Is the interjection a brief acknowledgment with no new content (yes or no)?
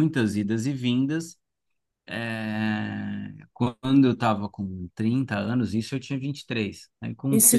no